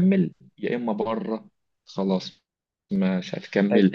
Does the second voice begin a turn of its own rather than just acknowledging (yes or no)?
no